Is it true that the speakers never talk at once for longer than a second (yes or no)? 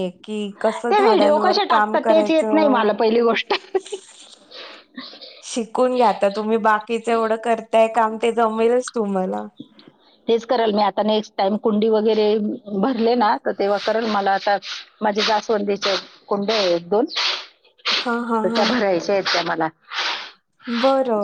no